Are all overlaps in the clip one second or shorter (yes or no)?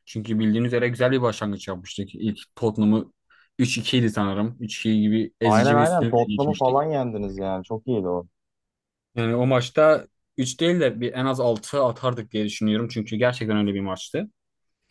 no